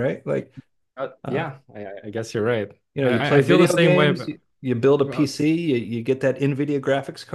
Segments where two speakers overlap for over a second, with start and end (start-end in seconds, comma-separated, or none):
2.9-4.3